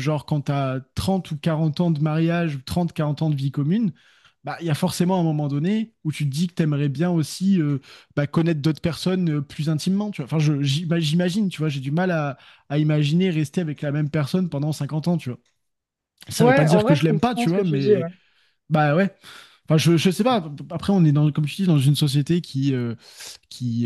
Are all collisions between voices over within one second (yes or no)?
no